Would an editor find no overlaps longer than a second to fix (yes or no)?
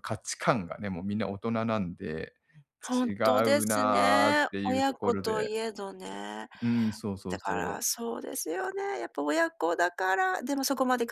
no